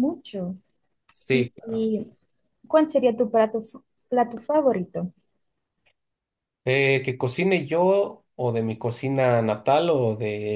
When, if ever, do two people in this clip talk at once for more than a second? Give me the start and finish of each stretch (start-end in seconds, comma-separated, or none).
none